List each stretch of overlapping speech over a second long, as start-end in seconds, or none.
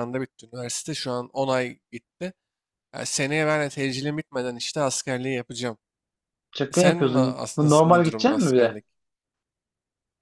6.7-8.8